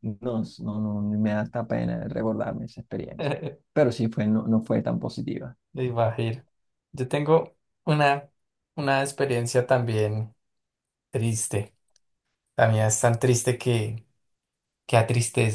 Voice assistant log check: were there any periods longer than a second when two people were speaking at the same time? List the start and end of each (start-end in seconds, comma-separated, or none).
none